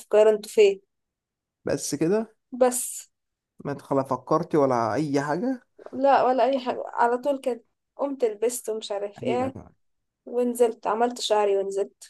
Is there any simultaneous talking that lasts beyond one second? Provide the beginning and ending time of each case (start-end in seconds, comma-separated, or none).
none